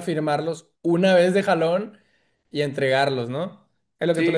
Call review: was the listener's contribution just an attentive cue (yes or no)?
no